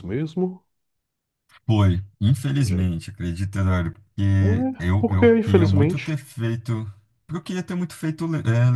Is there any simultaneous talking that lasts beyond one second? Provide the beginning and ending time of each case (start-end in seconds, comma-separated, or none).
4.4-6.1